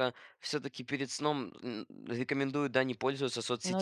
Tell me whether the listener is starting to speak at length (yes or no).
no